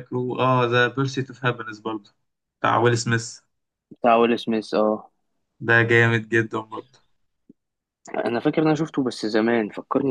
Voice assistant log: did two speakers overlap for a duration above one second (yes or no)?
no